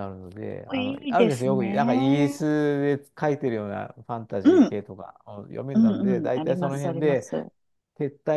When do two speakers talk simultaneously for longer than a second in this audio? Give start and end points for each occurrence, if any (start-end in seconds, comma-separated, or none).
0.7-2.4, 5.7-7.3